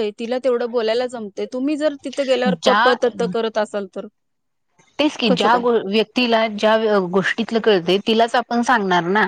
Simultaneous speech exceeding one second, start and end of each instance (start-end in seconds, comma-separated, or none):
none